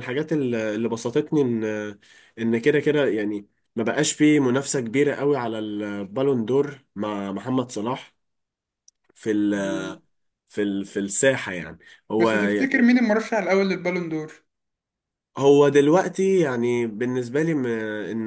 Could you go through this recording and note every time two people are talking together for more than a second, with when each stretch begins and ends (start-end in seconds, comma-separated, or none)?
none